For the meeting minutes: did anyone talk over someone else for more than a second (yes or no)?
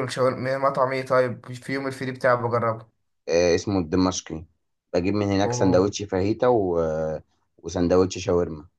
no